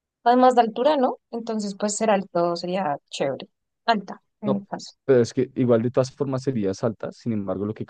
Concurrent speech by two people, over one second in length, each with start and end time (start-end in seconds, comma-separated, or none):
none